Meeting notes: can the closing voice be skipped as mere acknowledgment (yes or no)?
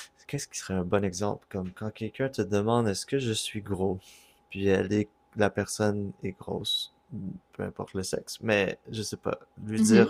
yes